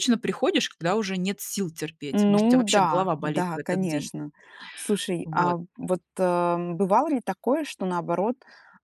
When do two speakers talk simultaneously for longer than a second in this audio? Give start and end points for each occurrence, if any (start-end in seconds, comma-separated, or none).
2.1-4.1